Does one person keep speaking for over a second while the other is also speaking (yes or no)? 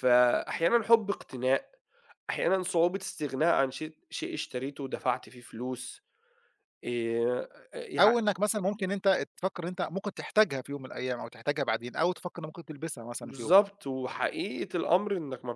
no